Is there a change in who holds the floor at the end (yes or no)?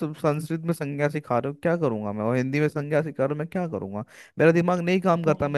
no